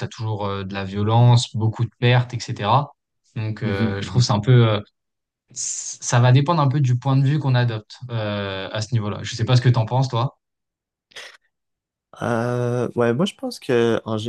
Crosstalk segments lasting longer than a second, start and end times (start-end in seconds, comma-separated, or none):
none